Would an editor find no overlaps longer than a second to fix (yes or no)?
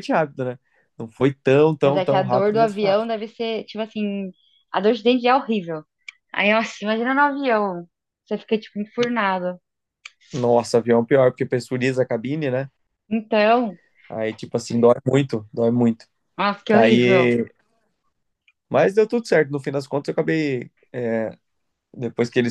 no